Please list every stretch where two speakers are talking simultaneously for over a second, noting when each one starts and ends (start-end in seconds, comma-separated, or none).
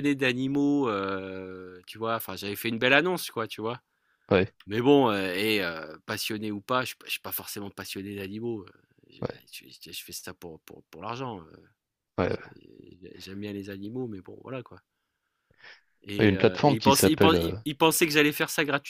16.2-17.6